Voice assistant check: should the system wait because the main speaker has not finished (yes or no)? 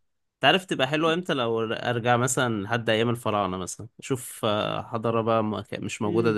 no